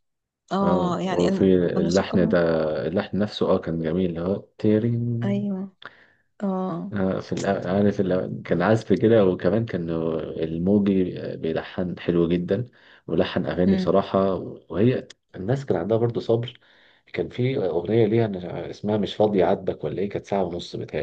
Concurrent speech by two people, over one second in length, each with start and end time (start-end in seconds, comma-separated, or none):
0.6-2.4